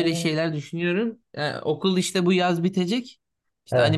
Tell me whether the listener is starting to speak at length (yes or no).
no